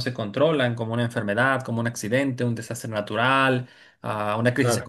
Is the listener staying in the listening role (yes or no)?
yes